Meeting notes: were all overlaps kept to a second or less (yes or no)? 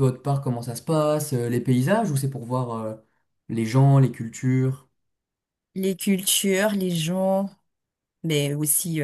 yes